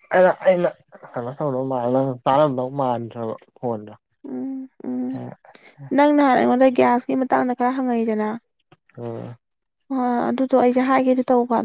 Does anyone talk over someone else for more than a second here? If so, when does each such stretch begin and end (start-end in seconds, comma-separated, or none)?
none